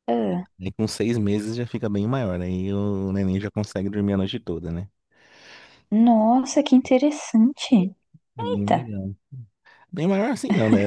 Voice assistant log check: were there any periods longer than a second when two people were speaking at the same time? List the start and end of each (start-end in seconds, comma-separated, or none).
none